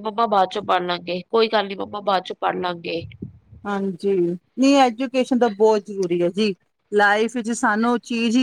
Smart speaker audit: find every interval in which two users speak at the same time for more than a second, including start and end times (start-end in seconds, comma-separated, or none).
none